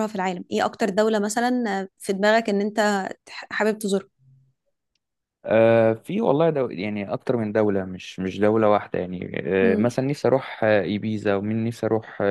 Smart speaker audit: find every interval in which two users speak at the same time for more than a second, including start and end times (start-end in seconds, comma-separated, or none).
none